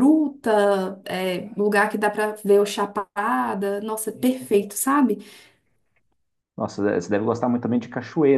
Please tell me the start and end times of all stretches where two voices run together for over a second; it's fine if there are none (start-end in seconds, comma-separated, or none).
none